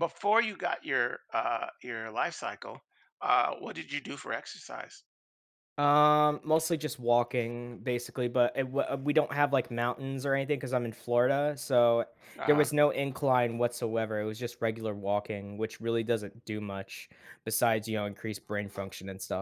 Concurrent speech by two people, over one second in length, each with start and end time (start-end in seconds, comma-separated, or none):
none